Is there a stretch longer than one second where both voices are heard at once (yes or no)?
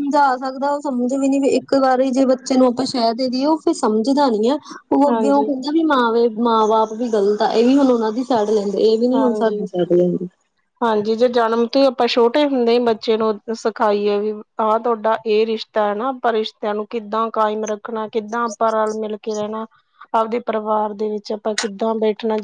no